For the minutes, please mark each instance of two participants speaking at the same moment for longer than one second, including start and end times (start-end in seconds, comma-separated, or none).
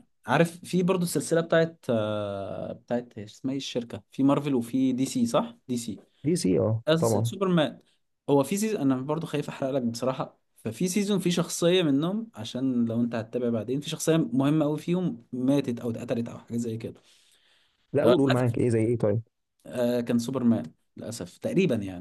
none